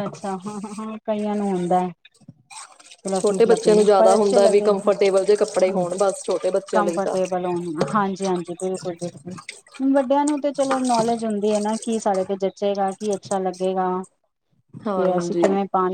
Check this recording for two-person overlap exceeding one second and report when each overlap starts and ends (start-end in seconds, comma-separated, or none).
3.2-5.8